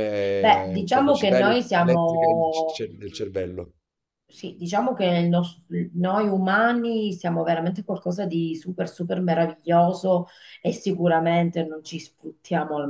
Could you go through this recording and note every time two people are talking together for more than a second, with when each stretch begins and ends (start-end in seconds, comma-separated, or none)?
0.8-2.8